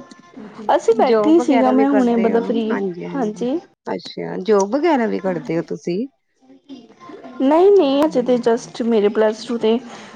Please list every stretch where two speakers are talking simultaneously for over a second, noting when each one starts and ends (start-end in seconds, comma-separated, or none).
1.1-2.5